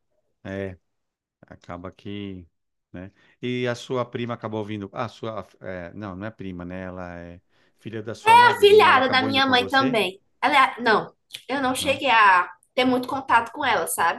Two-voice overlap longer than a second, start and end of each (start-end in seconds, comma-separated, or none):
8.2-10.0